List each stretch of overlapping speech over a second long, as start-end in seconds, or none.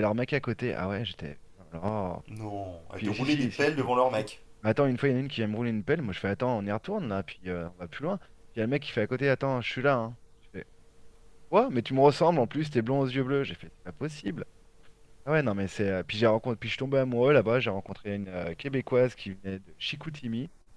2.9-4.4